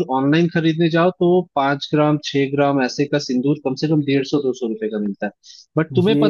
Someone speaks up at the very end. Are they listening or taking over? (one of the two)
listening